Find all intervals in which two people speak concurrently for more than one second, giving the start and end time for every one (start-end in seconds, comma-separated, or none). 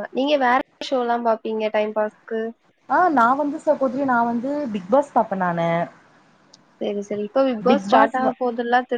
none